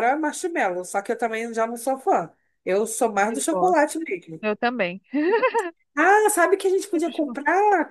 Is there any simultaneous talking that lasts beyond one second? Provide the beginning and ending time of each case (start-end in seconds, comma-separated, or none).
none